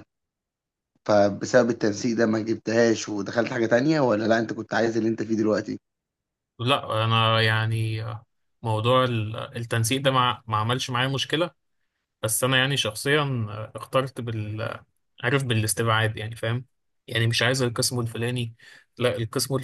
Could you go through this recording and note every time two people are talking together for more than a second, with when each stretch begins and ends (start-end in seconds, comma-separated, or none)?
none